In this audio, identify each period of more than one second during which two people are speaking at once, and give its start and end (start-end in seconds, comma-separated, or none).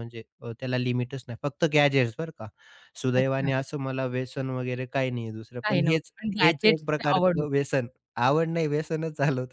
5.6-7.5